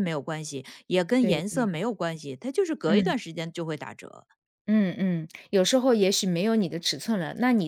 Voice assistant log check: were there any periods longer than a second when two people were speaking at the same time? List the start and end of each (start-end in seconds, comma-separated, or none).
none